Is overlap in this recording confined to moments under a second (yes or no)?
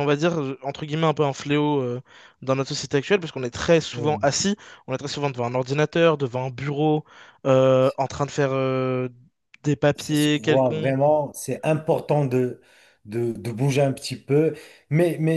no